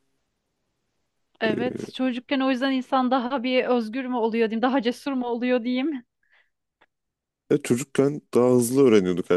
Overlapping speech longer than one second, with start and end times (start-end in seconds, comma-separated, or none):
none